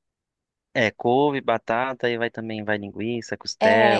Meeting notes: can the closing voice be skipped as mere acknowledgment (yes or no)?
no